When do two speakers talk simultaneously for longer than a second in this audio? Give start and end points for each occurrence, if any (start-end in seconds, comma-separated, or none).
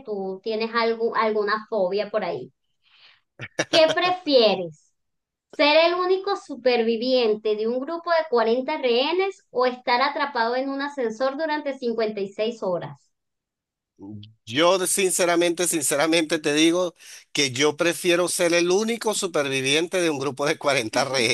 none